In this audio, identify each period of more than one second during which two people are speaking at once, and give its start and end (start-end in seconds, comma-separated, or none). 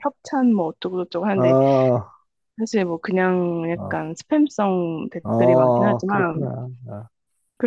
5.2-6.5